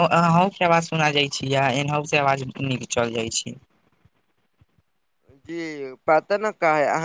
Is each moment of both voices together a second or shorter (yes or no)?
yes